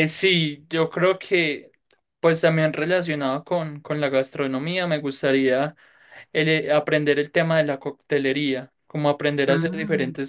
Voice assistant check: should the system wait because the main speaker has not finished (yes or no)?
yes